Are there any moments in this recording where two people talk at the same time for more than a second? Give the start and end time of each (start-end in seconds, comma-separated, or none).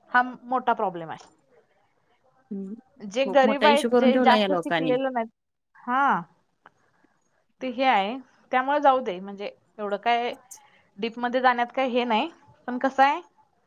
3.2-5.0